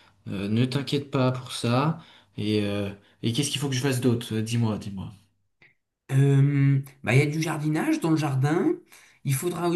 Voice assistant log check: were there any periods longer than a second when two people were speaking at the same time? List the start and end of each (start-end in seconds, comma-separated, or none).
none